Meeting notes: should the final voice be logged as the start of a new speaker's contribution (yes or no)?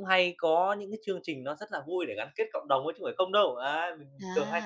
yes